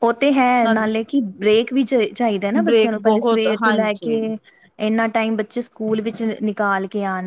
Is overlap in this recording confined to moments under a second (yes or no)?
no